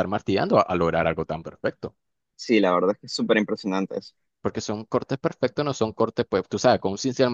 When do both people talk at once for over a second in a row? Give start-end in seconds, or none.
none